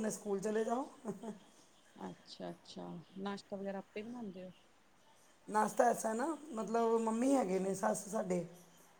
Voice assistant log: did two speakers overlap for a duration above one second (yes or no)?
no